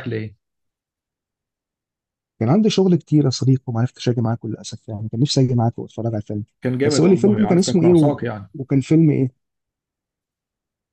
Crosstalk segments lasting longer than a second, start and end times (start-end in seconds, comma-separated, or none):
6.8-8.2